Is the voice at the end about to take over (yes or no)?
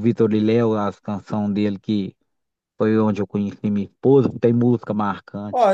yes